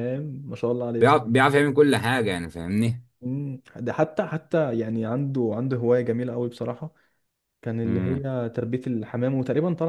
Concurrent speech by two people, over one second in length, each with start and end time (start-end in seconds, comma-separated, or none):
none